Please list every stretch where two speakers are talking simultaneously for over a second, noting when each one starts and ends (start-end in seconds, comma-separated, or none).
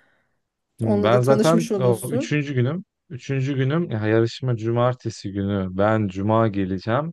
0.8-2.4